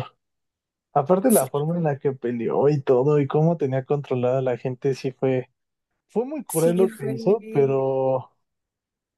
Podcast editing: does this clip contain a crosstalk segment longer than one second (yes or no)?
yes